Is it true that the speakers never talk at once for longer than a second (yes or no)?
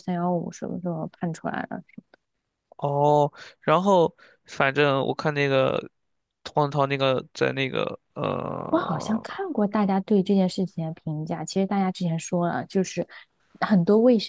yes